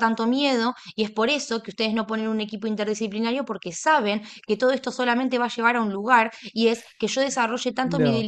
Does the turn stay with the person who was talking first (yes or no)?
yes